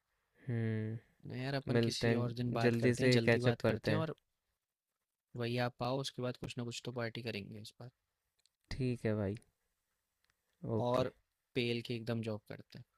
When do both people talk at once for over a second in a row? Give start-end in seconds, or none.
1.7-4.1